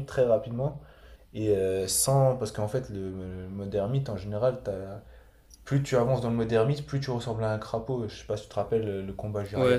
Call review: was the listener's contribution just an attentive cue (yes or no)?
no